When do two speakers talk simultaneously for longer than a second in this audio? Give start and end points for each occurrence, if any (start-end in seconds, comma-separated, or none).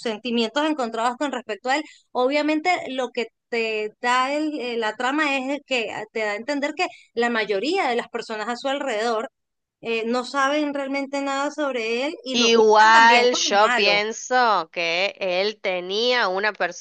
12.3-14.0